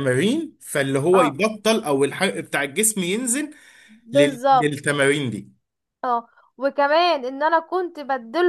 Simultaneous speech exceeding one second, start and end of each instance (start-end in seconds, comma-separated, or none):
none